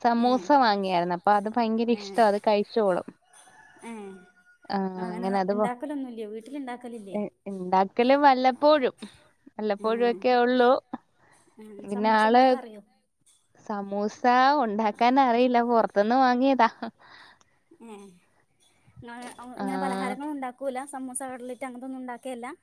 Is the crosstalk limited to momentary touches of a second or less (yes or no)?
yes